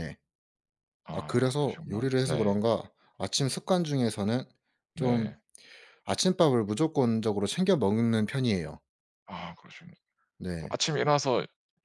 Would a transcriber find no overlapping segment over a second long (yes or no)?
no